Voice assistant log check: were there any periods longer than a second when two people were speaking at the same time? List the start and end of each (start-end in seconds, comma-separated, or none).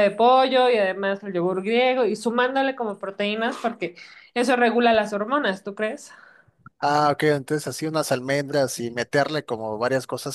none